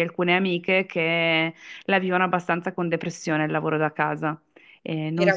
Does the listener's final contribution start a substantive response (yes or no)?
yes